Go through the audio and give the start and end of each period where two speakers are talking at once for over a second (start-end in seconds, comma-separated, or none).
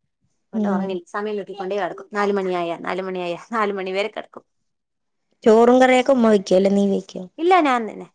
none